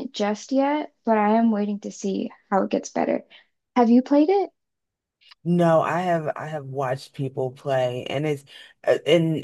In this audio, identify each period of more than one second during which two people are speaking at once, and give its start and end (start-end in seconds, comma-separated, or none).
none